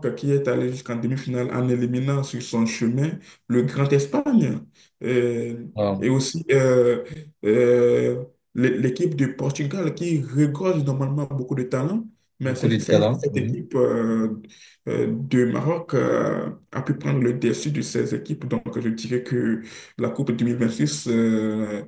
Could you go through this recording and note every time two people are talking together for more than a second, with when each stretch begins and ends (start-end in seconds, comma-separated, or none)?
12.4-13.7